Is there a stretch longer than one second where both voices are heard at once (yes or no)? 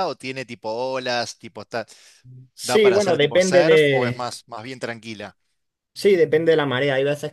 yes